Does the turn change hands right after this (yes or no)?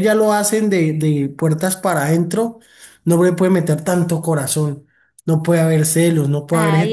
yes